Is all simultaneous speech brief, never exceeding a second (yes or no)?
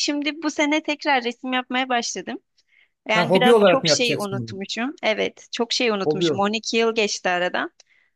no